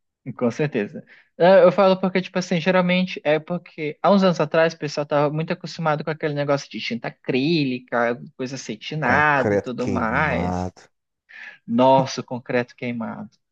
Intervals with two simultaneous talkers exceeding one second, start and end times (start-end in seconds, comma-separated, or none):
9.0-10.7